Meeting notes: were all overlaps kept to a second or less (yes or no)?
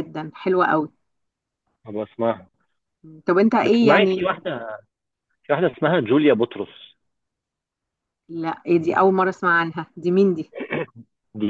yes